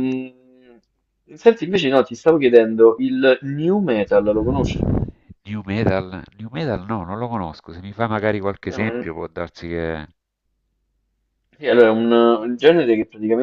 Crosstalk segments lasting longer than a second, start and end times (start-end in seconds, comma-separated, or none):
none